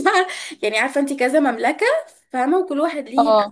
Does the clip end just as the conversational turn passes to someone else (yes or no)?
no